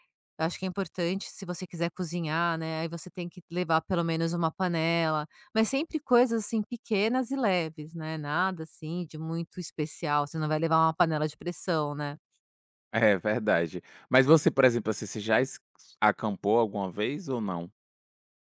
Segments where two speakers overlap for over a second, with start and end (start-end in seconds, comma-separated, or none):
none